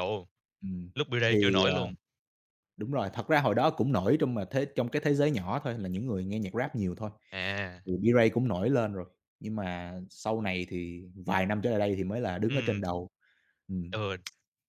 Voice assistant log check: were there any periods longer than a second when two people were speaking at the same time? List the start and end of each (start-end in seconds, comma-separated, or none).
none